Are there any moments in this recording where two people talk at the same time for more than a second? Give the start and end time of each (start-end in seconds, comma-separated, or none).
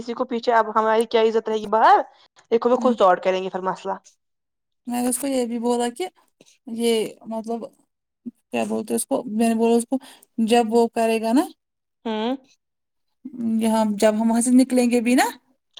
none